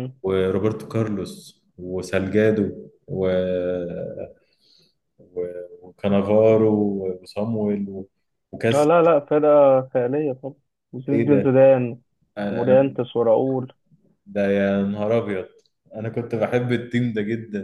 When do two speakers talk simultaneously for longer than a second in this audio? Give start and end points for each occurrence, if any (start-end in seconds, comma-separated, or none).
none